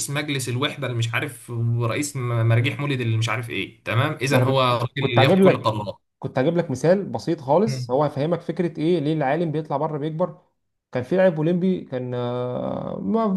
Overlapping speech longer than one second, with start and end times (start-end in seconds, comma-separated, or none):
4.3-5.8